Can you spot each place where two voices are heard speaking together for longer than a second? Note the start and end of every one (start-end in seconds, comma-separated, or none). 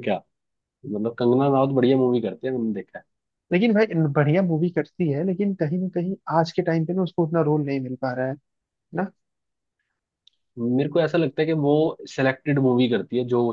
none